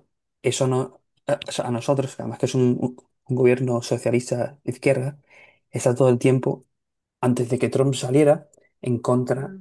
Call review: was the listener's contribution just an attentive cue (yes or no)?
yes